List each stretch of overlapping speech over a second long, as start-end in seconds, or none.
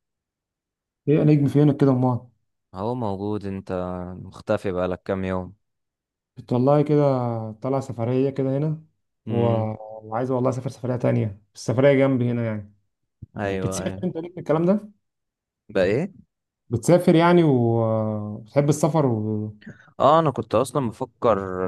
none